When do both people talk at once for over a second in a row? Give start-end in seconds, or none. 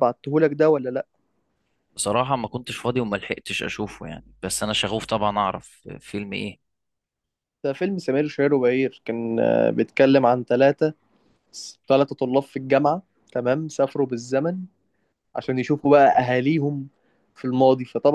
none